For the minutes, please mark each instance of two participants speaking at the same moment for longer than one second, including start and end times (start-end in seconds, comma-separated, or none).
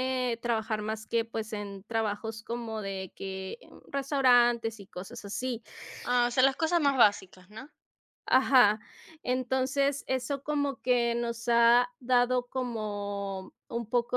none